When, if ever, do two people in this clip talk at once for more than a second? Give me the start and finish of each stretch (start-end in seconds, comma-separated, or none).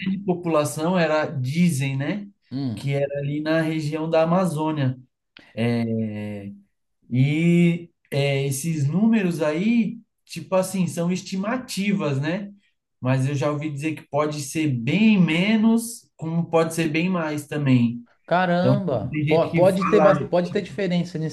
18.6-20.1